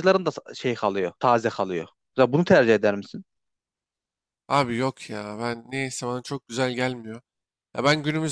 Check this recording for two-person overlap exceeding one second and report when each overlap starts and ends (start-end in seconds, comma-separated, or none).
none